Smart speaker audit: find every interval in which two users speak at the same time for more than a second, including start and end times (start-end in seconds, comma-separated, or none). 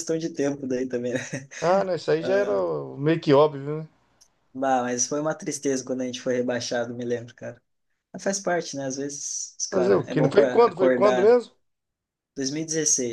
9.7-11.4